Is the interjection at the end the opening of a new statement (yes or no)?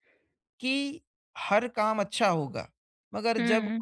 no